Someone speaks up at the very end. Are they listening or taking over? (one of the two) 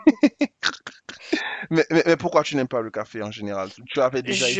taking over